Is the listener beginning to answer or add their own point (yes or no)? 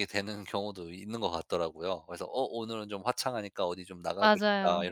no